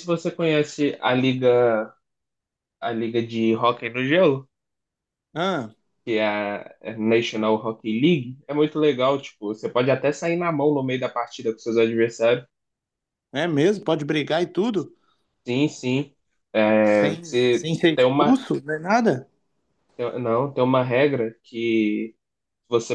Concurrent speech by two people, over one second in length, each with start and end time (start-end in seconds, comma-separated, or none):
16.9-18.4